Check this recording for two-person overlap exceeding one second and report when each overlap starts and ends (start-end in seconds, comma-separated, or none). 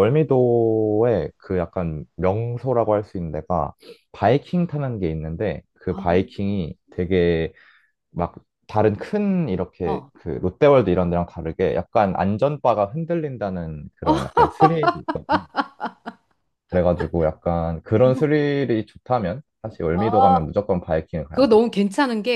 none